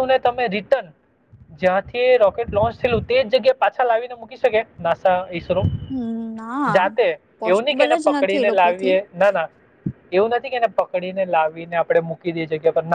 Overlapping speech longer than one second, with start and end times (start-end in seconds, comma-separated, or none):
7.4-8.9